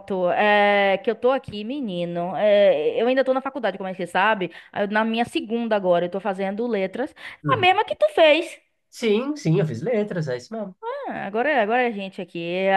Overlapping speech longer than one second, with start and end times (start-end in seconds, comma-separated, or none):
none